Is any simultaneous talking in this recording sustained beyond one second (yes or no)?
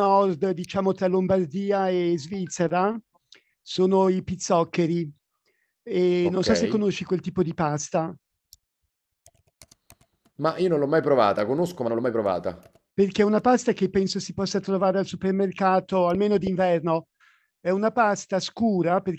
no